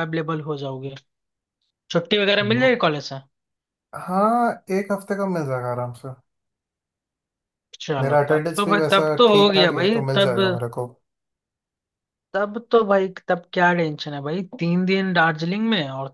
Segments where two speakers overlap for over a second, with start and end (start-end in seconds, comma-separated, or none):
8.0-10.4